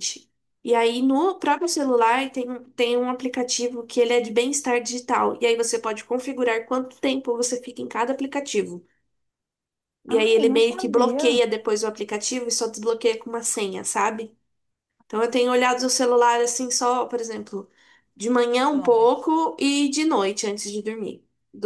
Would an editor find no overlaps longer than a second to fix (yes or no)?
no